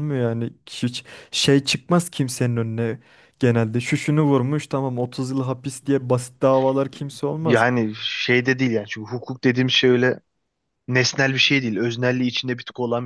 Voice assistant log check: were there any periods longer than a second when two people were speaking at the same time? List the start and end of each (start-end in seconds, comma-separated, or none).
none